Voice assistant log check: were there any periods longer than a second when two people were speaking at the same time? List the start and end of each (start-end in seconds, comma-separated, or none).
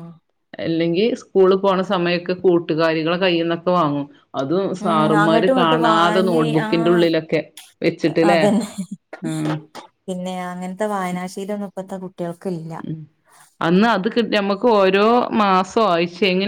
5.2-7.0